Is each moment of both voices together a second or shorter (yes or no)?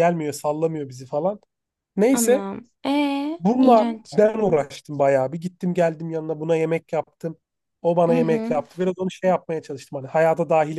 yes